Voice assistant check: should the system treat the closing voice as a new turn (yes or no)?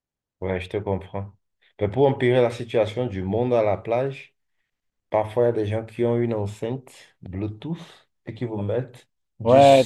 yes